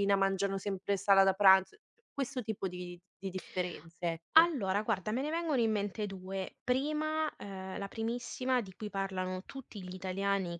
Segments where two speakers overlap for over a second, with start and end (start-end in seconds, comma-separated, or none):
none